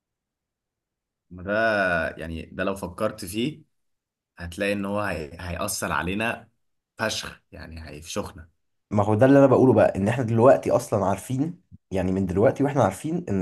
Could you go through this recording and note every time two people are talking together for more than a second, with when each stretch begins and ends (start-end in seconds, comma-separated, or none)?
none